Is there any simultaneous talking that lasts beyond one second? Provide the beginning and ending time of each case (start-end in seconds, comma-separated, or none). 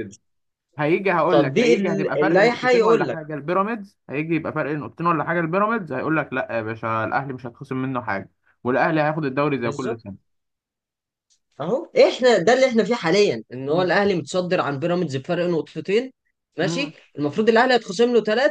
1.3-3.2